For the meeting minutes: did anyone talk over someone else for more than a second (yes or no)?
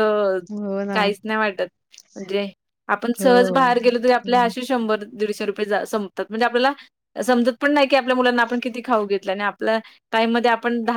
yes